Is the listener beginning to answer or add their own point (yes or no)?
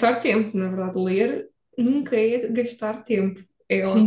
yes